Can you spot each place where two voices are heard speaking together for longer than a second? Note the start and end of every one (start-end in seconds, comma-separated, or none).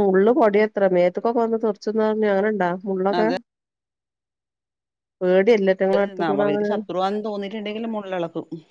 none